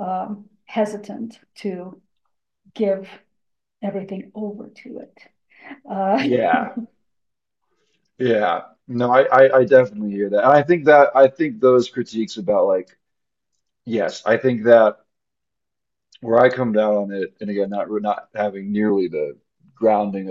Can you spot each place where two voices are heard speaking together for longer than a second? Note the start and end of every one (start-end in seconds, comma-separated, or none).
none